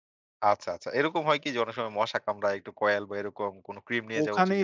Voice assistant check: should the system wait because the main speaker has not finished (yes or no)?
no